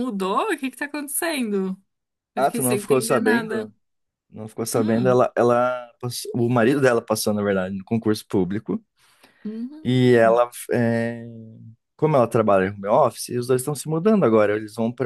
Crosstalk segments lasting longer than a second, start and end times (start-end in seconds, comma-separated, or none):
2.4-3.7